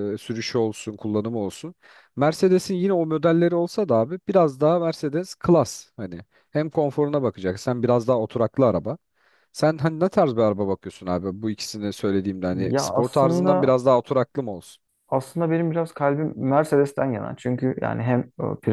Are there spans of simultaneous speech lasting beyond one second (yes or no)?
yes